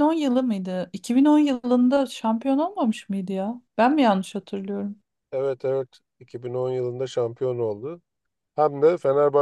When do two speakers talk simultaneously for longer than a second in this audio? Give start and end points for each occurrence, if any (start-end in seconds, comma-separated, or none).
none